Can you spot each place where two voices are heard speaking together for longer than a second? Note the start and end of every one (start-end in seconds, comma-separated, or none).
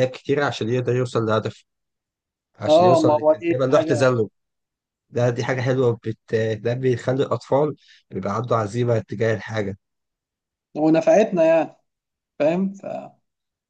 2.7-4.1